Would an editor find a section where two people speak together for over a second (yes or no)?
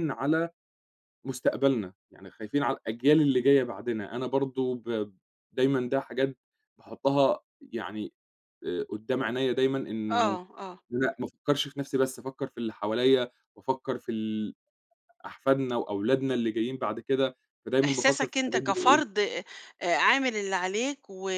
yes